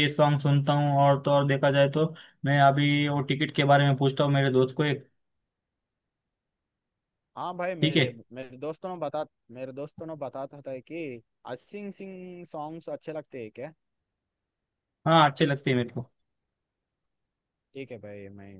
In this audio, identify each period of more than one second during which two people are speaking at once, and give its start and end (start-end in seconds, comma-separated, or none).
none